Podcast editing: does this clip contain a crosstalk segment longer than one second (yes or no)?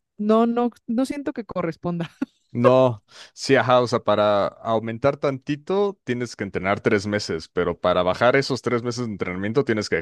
no